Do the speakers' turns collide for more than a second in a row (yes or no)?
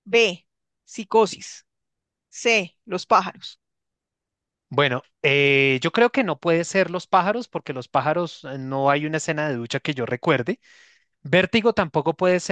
no